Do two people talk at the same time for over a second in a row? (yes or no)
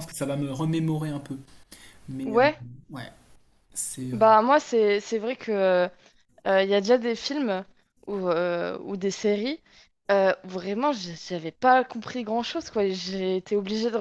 no